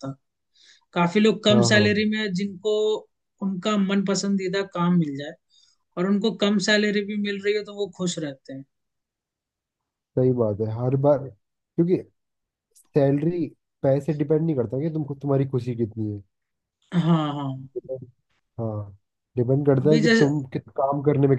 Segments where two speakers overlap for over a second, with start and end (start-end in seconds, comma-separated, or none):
none